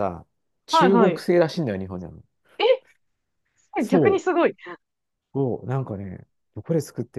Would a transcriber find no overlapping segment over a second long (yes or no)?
yes